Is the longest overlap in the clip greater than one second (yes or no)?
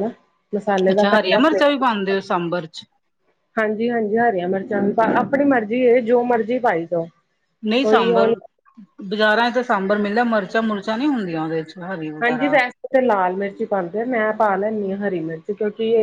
yes